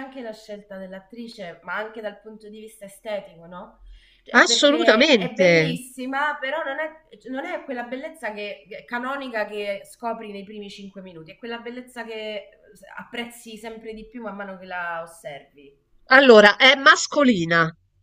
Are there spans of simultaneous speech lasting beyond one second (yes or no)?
yes